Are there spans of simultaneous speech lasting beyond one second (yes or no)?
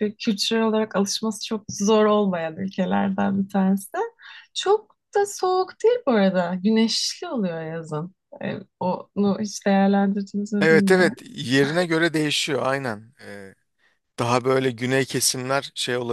no